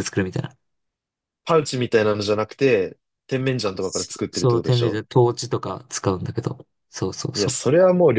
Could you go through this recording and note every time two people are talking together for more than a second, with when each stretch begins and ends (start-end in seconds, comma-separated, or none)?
3.6-5.0